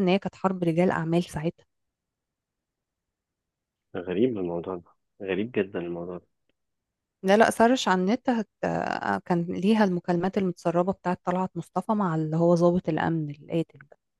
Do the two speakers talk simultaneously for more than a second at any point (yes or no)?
no